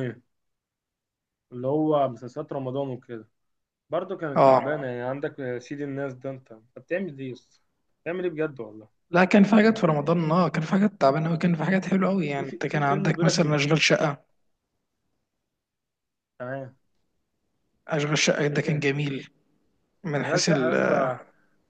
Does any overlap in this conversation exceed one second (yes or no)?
yes